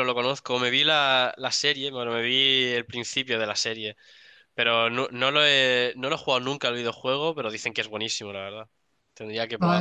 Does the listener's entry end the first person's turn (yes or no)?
yes